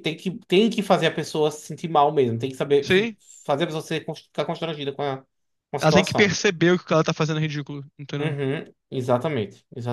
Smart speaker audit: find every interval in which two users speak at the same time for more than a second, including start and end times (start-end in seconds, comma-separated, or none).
none